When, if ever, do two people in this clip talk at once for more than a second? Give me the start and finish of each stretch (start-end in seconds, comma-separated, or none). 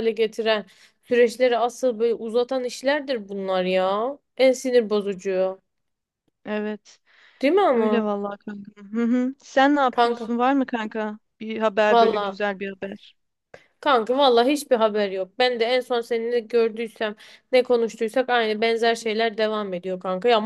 none